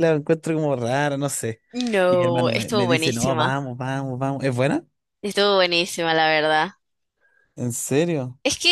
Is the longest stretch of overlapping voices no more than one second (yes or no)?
no